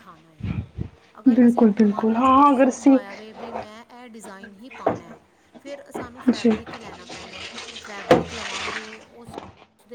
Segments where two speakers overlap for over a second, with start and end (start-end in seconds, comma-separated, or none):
1.3-3.0